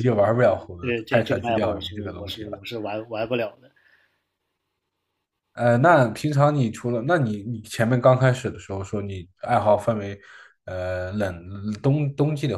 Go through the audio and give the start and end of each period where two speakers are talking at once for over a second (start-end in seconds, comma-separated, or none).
0.8-2.7